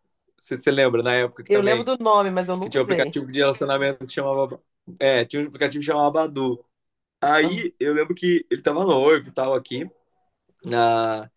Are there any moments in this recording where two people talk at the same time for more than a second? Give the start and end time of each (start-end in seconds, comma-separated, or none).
none